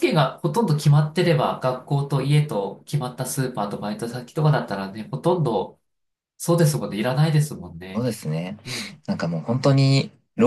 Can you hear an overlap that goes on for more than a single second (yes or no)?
no